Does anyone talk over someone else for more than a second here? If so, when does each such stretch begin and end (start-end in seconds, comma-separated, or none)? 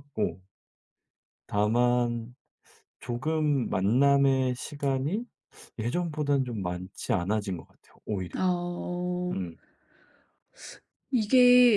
none